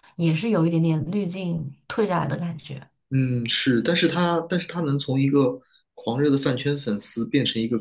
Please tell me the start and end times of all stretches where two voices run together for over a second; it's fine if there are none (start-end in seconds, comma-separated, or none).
none